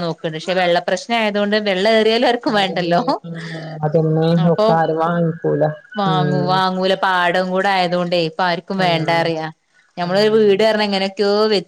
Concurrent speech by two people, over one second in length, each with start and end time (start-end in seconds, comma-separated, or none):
none